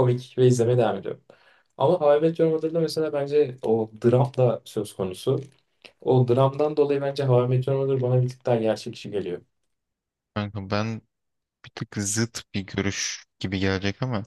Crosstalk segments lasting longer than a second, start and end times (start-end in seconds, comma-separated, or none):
none